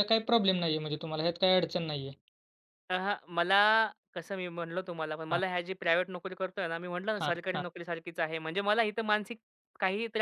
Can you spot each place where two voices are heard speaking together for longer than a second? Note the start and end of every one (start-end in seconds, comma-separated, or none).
none